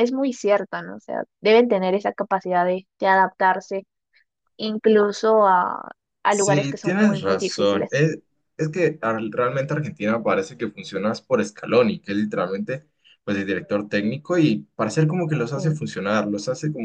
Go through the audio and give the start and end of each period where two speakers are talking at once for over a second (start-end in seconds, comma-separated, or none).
6.3-8.0